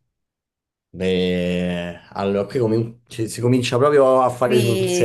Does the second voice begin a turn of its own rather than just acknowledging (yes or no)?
yes